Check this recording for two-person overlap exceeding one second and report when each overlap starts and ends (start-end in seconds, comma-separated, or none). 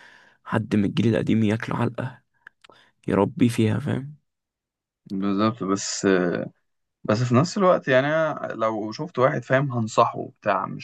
none